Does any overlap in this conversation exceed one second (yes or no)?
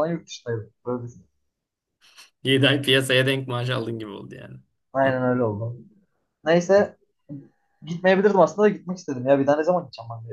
no